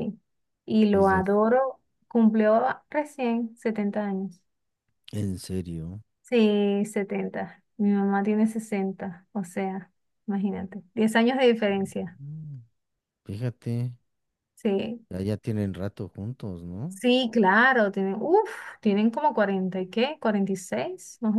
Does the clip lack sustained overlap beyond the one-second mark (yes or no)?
yes